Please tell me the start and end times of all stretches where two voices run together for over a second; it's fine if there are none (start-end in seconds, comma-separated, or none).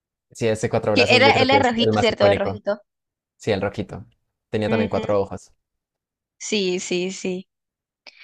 0.9-2.6